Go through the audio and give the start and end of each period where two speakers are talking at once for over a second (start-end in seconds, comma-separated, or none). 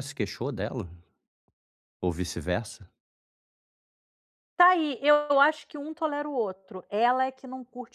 none